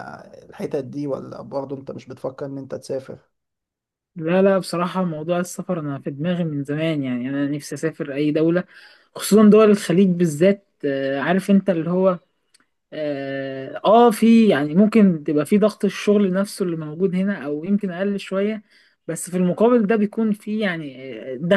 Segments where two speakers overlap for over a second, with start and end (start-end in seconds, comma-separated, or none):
none